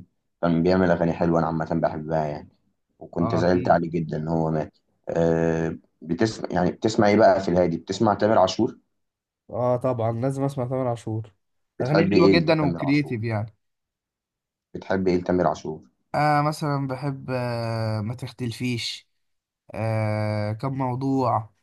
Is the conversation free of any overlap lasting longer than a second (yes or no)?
no